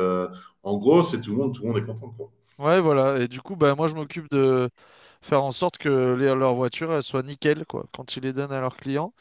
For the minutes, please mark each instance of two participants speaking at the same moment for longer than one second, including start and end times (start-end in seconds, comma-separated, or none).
none